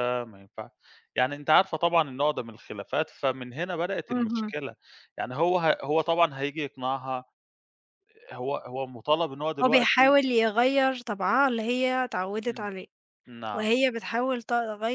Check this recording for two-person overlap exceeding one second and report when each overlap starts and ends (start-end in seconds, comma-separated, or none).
none